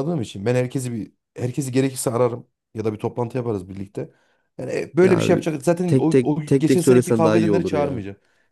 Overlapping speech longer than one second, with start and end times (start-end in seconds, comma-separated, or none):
5.9-8.0